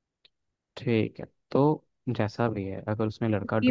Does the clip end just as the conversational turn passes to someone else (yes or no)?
yes